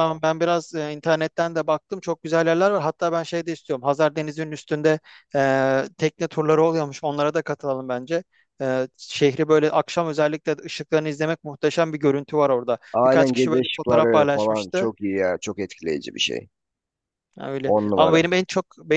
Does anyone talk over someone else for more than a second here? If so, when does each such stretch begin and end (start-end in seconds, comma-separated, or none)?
12.9-14.9